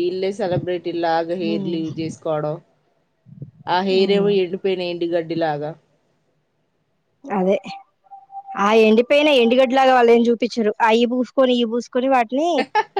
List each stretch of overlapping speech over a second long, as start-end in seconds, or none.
none